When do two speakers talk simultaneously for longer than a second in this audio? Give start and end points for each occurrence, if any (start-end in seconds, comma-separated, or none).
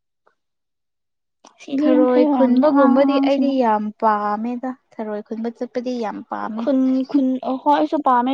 1.8-3.5